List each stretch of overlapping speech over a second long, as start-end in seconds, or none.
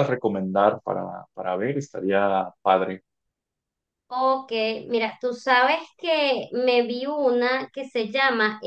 none